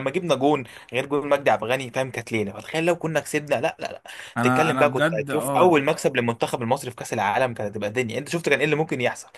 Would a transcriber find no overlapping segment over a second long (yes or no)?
no